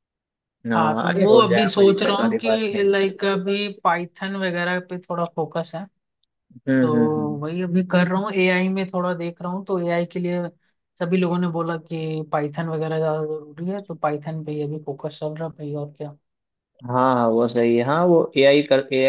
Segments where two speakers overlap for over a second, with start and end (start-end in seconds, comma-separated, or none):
0.7-3.0